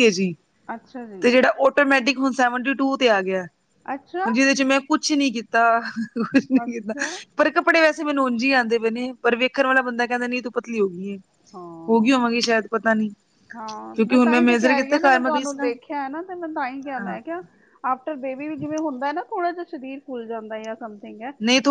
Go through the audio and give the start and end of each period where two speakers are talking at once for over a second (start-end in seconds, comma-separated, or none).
13.9-15.7